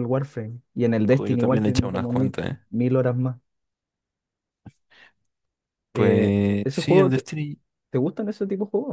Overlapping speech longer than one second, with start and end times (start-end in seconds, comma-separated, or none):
1.1-2.6, 5.9-7.3